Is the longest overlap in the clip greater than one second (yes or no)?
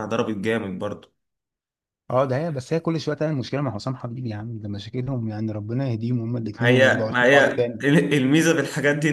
yes